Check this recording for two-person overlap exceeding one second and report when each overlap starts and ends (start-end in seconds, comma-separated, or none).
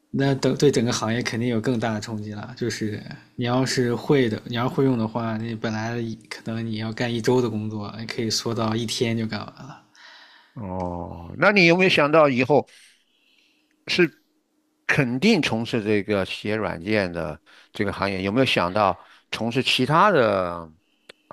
none